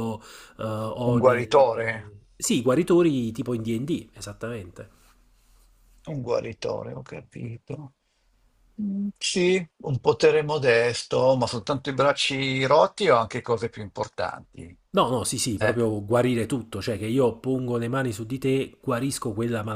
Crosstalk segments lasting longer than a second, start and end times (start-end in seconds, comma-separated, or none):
none